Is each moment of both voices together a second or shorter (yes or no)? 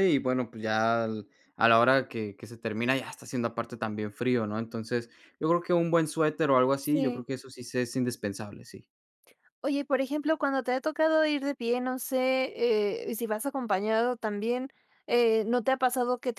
yes